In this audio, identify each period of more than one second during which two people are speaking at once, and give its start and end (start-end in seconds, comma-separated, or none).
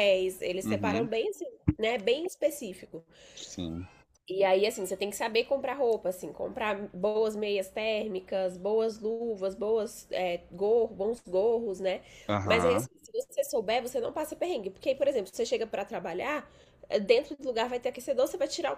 none